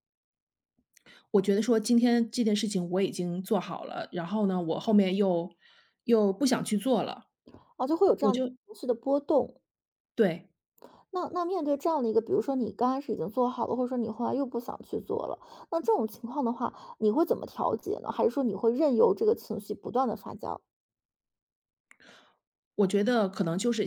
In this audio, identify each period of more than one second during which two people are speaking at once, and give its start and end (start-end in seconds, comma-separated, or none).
none